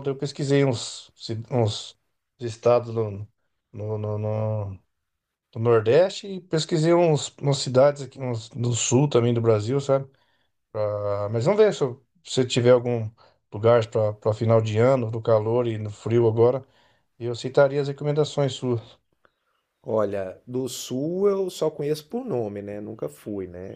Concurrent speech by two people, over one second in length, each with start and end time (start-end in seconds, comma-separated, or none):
none